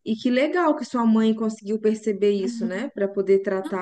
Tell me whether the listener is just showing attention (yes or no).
no